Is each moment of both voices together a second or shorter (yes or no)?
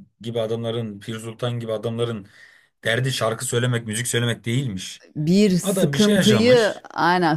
no